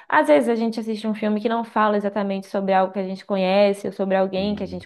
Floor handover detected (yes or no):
no